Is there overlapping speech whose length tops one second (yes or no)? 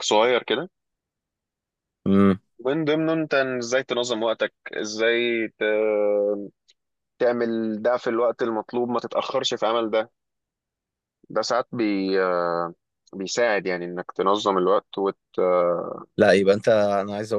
no